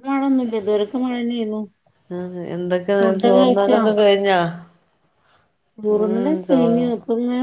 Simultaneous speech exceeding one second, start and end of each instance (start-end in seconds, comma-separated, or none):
none